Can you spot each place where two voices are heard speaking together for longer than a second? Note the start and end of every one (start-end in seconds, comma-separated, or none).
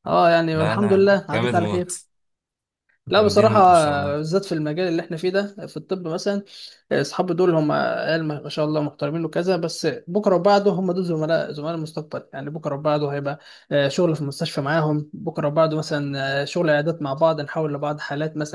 0.5-1.9